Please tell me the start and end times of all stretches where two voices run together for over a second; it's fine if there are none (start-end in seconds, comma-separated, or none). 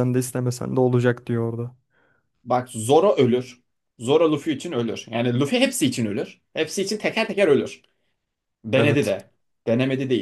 none